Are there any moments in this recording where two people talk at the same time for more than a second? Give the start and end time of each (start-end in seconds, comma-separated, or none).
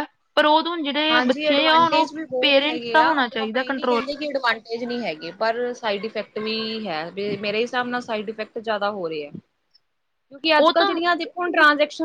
1.1-4.0